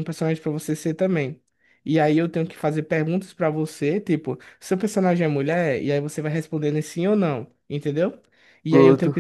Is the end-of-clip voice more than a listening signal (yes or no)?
no